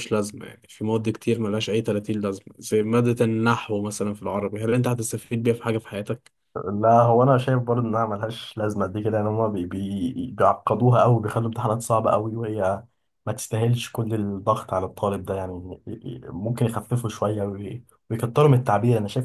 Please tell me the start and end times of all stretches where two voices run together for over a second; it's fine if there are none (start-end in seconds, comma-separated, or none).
none